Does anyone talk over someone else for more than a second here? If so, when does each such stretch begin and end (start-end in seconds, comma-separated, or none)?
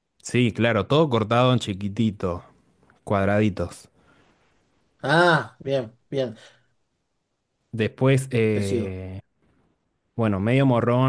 none